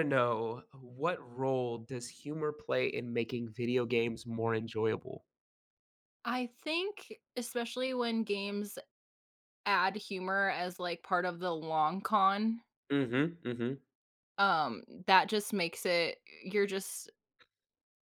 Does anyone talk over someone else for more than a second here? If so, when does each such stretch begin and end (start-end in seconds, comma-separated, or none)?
none